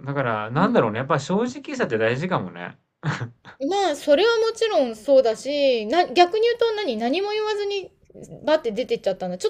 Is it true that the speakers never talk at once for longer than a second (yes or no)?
yes